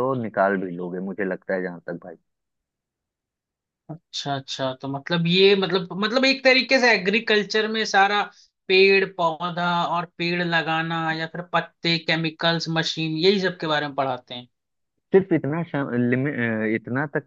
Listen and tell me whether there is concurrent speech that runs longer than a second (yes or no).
no